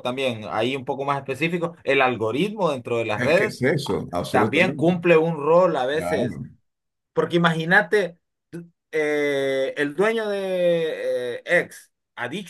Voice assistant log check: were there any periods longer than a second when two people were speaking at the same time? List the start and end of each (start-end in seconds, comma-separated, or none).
3.1-4.9